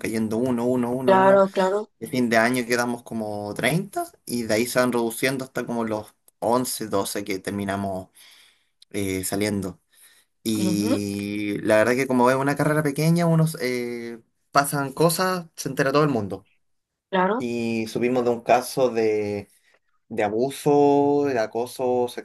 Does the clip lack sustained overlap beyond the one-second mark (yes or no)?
yes